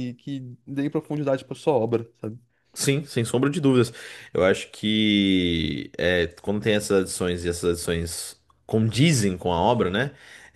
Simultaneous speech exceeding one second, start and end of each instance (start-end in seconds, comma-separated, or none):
none